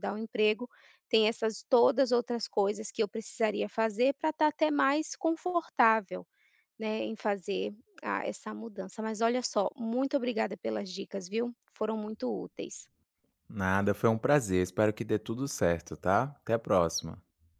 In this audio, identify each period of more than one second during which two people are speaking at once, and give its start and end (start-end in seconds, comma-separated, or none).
none